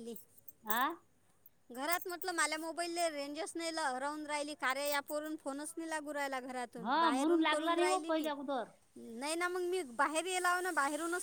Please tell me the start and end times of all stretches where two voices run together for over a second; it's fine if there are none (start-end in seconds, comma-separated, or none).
6.8-8.3